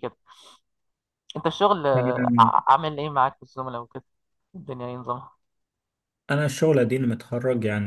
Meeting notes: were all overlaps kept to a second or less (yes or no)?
yes